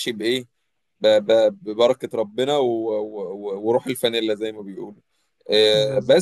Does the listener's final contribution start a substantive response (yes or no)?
no